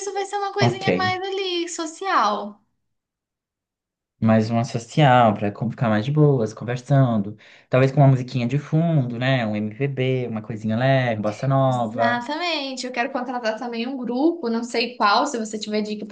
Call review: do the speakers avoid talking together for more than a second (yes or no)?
yes